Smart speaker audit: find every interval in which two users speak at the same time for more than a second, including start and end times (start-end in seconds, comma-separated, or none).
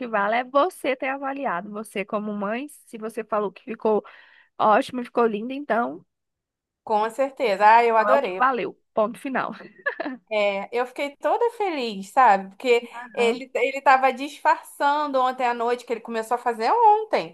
none